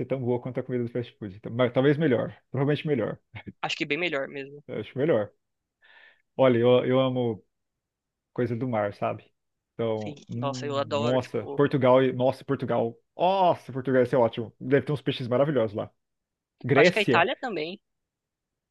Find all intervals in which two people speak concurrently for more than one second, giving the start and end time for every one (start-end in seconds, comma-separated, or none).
10.0-11.6